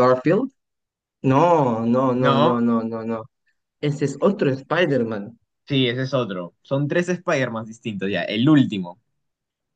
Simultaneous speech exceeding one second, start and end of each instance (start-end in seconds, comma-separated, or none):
none